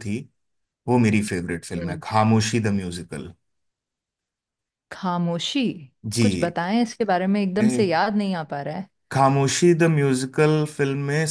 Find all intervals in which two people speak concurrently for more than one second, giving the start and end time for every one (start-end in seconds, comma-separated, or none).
none